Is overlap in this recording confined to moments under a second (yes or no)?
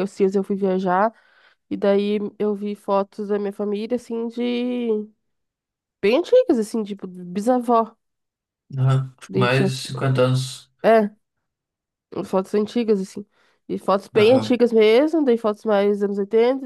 yes